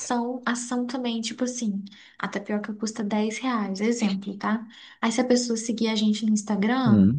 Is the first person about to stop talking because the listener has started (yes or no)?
no